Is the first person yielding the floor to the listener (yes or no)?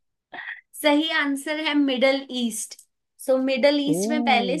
no